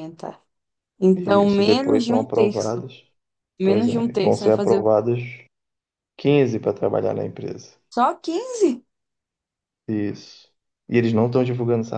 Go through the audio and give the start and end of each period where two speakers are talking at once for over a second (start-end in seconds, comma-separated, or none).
1.1-2.8, 3.6-4.8